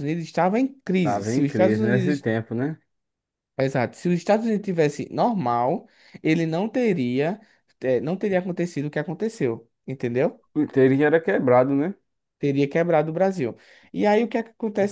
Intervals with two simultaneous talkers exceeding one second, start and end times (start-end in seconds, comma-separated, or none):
1.0-2.3